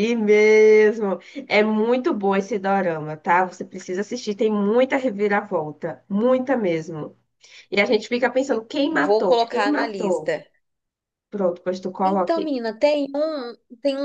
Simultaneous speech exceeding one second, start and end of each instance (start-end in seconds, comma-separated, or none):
8.9-10.4